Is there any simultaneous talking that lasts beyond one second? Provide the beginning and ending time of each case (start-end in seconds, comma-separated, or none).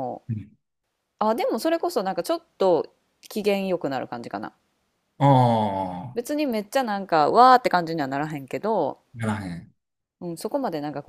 none